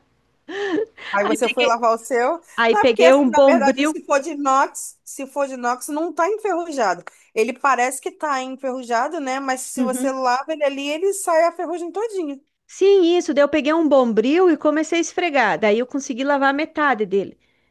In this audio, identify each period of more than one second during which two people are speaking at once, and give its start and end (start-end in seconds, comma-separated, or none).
2.5-4.0